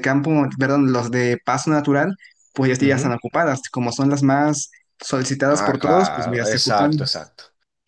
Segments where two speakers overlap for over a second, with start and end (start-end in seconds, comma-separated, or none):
5.6-7.0